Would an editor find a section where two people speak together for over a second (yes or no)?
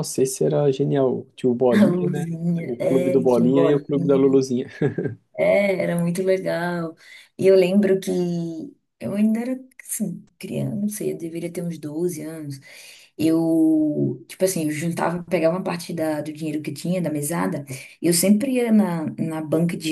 yes